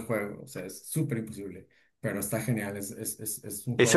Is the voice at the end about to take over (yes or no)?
yes